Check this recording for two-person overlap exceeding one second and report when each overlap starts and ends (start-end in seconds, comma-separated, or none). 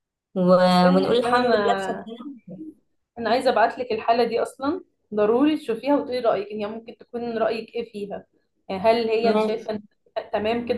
0.7-2.1